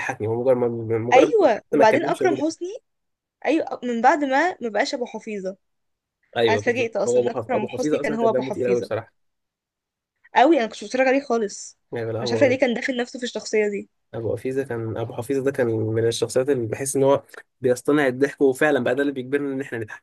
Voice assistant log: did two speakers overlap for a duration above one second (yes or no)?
yes